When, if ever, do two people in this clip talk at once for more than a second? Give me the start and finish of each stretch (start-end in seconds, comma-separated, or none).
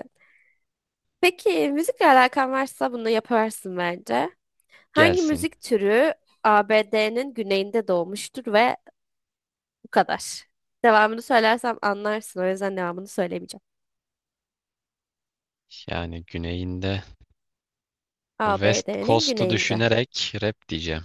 18.5-19.8